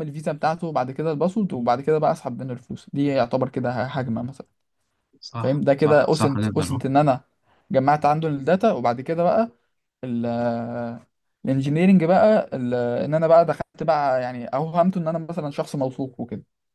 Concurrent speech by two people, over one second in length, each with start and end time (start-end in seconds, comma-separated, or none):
5.4-6.8